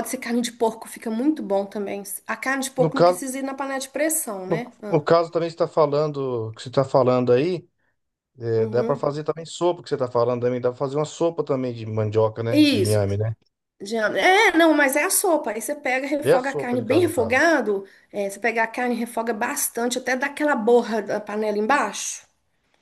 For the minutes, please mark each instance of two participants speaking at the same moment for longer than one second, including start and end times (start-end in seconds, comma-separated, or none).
16.2-17.4